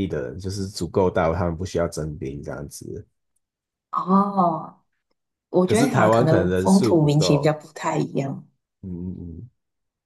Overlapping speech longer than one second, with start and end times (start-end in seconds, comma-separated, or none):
5.6-7.6